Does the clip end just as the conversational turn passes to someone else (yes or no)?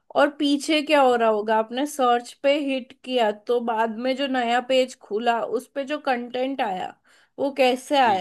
no